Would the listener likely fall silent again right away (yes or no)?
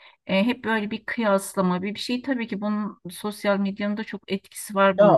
no